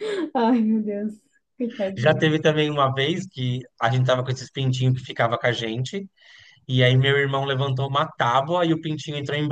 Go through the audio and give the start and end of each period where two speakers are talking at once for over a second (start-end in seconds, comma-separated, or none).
none